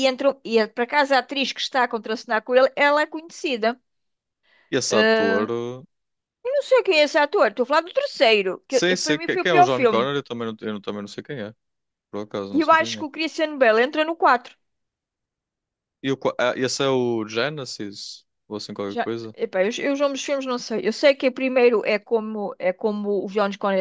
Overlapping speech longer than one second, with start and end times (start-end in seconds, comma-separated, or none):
8.7-10.1